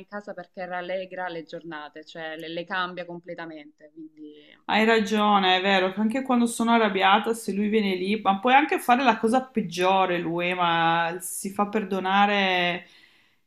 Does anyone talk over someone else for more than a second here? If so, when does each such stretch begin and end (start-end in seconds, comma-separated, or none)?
none